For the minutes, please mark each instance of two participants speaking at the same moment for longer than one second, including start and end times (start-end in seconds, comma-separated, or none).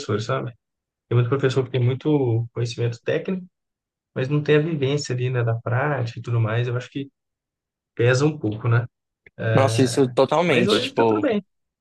9.5-11.3